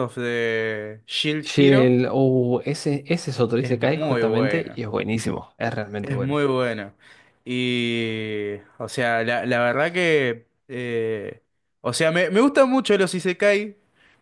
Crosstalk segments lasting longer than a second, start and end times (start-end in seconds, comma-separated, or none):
3.6-4.8